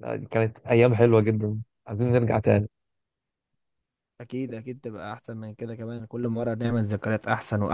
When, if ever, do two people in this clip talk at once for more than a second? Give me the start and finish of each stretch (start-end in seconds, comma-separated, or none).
none